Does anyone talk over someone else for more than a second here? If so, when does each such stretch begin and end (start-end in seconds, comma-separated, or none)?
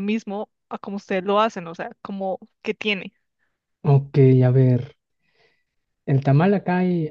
none